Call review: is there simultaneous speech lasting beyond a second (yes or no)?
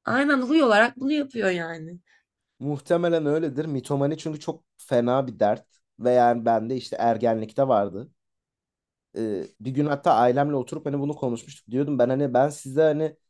no